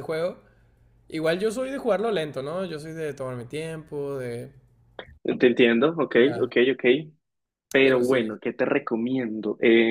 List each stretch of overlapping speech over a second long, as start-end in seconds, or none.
none